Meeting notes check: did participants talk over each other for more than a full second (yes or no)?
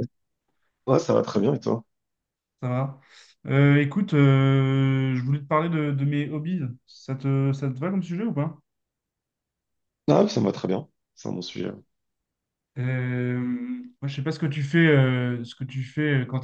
no